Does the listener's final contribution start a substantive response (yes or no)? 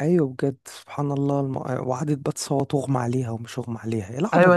yes